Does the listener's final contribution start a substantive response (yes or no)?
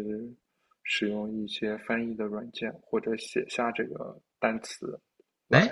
yes